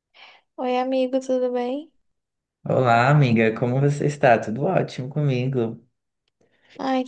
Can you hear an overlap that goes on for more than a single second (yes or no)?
no